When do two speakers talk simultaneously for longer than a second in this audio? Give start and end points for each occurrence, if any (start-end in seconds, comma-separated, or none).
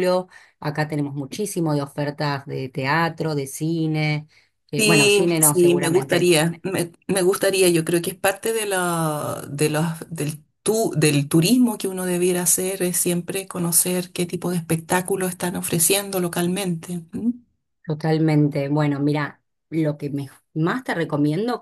4.8-6.3